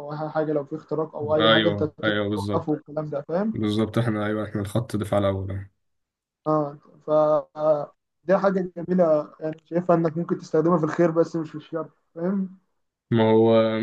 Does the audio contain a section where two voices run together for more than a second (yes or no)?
yes